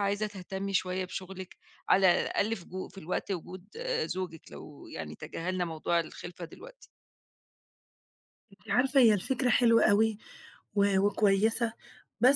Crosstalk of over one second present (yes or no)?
no